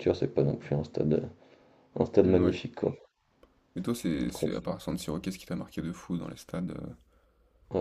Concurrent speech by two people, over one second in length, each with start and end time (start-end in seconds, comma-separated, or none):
none